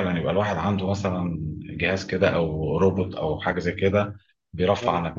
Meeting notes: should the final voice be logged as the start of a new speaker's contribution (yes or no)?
no